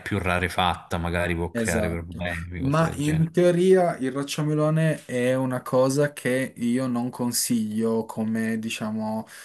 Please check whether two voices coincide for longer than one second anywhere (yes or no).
yes